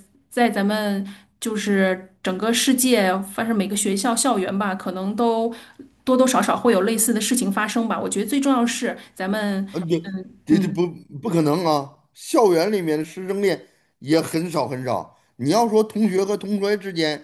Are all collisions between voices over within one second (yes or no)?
yes